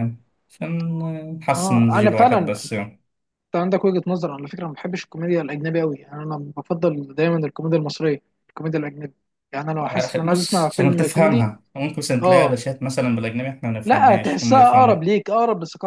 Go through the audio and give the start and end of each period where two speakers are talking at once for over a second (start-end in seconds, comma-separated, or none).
1.5-2.8, 9.8-11.5, 13.8-15.1